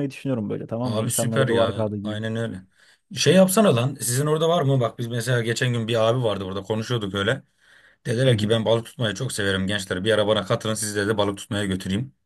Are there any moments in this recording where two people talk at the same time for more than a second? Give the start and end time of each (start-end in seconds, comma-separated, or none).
0.8-2.2